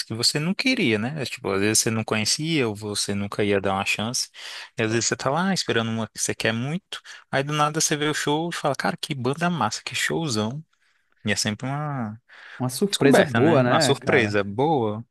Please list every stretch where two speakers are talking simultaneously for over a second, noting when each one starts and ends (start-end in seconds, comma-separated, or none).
12.9-14.4